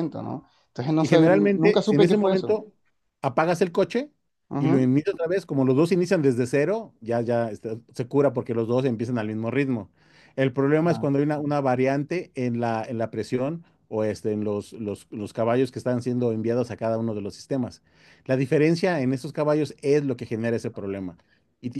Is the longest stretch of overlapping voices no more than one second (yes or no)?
no